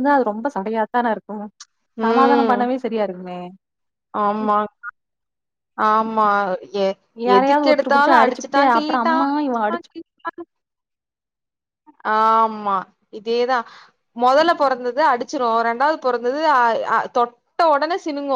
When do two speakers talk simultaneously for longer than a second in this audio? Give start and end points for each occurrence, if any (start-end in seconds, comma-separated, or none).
7.3-9.9